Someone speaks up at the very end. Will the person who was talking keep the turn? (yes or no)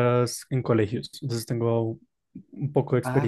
no